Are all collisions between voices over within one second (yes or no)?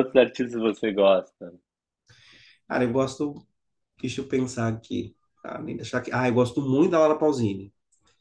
yes